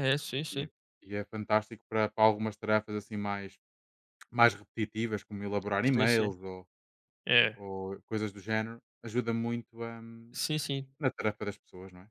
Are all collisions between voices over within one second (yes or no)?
yes